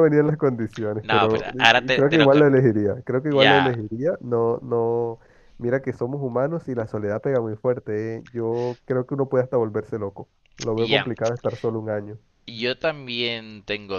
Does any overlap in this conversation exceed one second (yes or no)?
yes